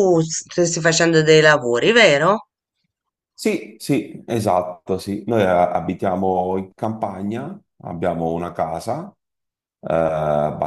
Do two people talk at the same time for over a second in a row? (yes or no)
no